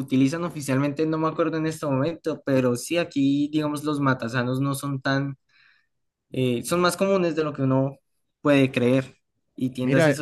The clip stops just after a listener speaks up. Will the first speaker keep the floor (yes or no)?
yes